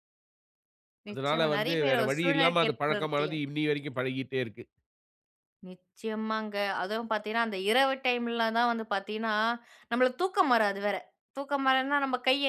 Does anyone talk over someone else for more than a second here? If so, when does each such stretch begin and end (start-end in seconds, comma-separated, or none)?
1.1-3.3